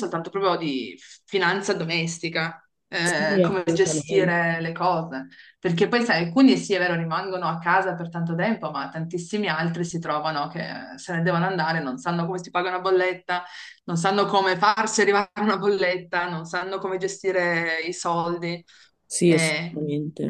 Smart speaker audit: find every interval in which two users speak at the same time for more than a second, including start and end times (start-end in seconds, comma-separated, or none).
3.0-4.3